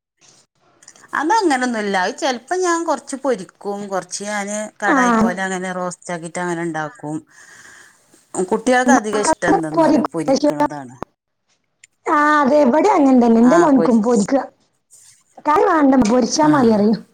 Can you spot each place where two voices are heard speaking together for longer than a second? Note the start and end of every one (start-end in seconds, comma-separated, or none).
none